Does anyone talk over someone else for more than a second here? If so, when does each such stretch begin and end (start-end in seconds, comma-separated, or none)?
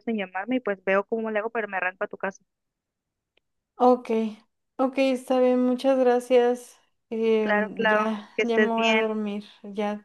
7.4-9.2